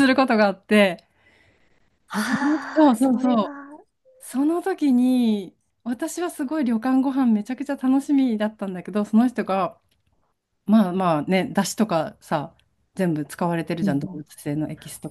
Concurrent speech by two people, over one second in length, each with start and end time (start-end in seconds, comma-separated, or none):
2.1-3.5